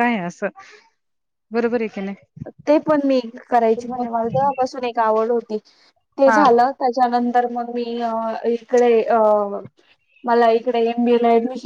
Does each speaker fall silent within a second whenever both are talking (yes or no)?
yes